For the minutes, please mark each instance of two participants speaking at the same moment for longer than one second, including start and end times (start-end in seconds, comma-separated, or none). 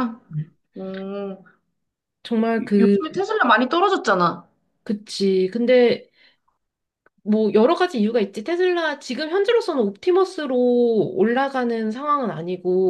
none